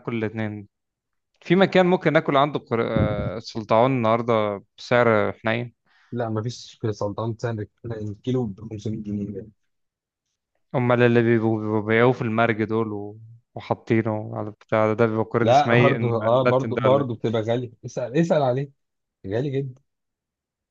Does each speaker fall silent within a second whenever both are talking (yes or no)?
no